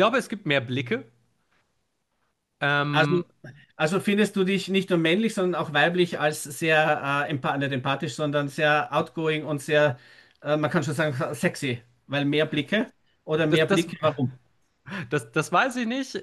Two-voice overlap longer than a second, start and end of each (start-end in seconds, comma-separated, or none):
none